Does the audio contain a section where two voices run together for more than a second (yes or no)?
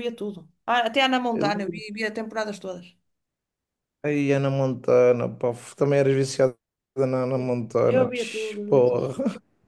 yes